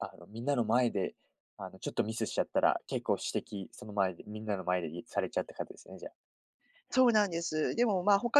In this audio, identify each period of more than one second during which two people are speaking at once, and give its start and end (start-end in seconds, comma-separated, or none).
none